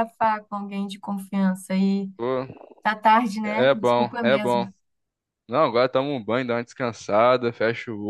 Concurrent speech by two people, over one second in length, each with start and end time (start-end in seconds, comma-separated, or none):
3.5-4.7